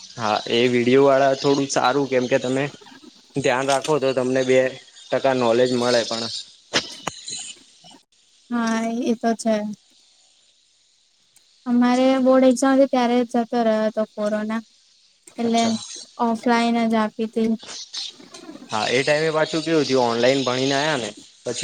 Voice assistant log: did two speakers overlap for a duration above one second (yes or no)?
no